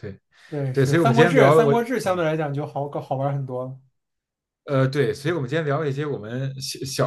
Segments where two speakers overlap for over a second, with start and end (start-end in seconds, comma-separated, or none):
0.7-2.2